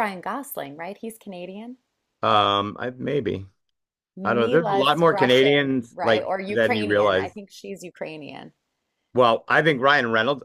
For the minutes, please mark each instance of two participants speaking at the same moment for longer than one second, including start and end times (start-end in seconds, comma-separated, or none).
4.2-7.3